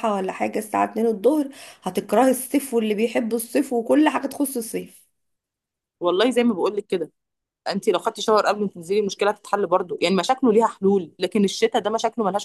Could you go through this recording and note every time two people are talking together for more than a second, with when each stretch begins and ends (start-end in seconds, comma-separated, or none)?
none